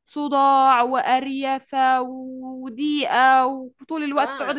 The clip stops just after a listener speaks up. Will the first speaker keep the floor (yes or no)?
no